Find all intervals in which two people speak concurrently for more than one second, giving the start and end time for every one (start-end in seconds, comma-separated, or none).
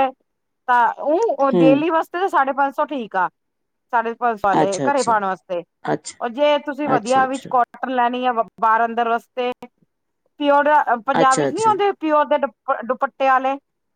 none